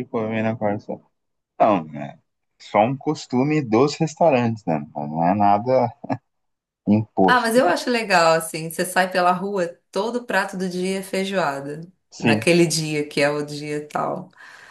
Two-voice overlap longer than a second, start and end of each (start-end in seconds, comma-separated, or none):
none